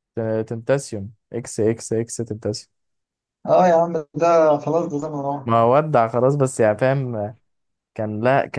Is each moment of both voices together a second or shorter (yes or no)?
yes